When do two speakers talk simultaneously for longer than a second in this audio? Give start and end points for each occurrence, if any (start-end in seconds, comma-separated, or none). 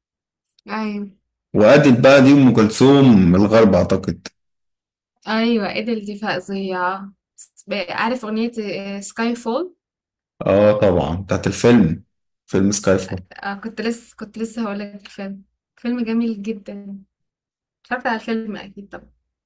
none